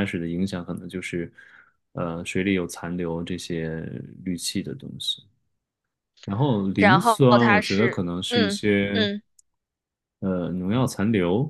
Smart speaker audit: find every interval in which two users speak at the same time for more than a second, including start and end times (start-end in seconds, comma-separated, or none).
6.8-9.1